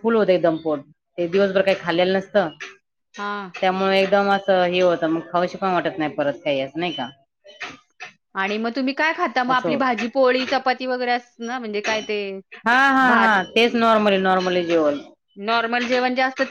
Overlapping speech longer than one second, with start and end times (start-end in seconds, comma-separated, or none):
none